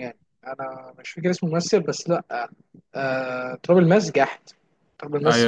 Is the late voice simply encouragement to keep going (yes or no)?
no